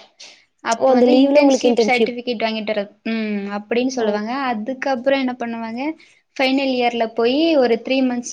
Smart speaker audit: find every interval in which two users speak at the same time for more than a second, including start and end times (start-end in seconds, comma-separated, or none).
0.8-2.1